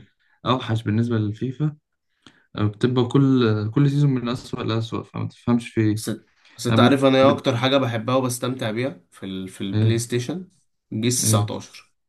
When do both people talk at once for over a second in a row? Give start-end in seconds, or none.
none